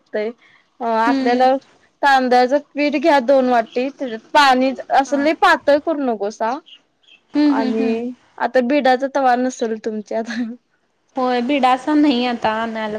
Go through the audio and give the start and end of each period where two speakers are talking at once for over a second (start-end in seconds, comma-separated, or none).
none